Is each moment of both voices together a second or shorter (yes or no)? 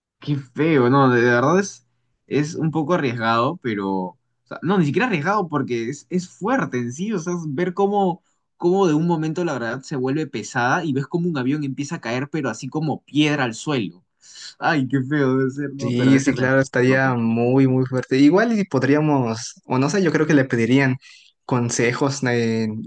no